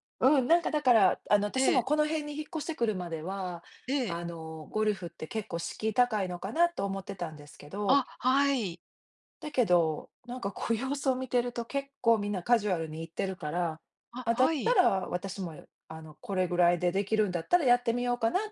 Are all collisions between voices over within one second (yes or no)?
yes